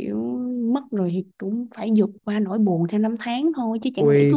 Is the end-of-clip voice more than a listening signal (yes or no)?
yes